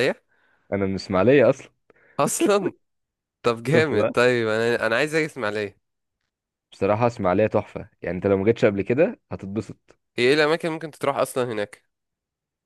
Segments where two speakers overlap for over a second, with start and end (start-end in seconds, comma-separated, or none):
none